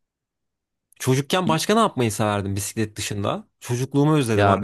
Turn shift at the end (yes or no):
yes